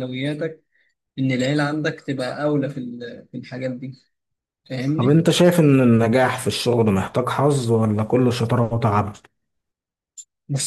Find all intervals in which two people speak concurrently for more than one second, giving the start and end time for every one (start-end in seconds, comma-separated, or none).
none